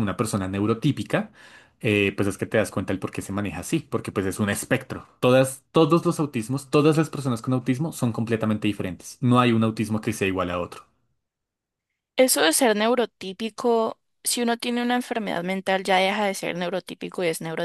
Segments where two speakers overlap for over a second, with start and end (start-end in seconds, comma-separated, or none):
none